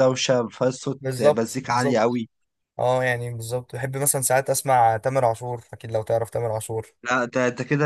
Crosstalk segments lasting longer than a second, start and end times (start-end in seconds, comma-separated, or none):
1.0-2.2